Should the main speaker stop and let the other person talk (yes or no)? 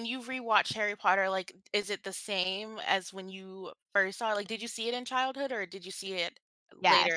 yes